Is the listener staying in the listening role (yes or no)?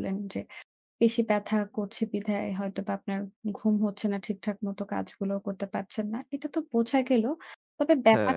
yes